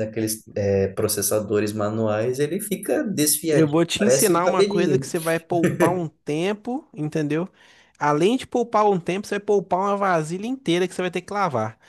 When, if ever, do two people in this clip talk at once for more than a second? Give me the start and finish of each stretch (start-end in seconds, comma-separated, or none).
3.5-5.1